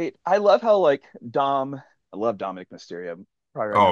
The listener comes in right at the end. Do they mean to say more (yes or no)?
yes